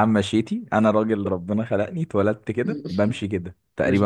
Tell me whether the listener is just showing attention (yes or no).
yes